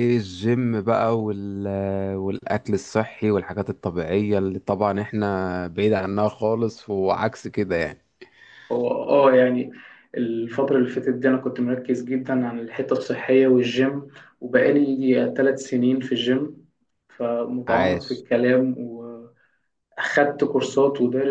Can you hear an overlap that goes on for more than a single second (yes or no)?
no